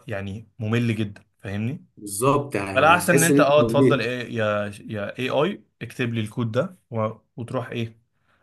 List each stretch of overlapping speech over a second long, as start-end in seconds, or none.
2.7-4.1